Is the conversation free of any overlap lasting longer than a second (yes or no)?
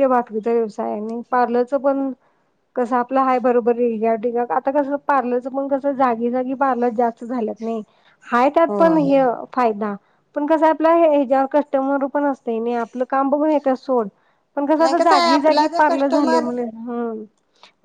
no